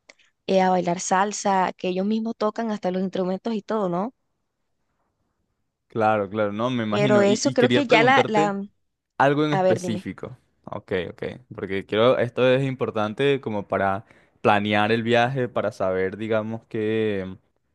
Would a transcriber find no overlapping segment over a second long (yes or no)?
no